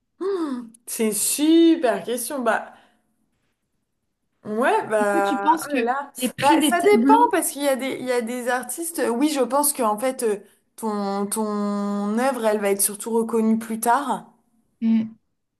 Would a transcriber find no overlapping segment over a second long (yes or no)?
no